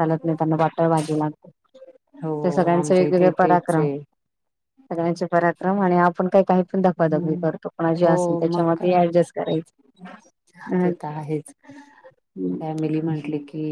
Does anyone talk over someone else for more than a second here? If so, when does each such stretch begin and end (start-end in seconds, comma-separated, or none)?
2.4-3.8